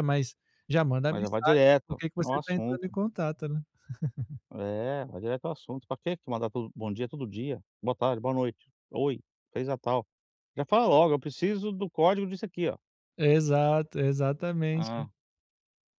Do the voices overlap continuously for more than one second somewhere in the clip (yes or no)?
yes